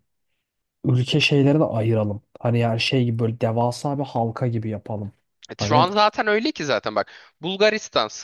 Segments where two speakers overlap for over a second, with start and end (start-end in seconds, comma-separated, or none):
none